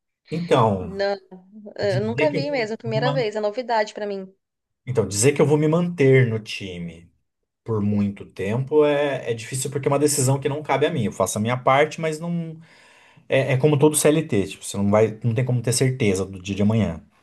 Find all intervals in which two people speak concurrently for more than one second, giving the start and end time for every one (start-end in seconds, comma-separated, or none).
1.8-3.3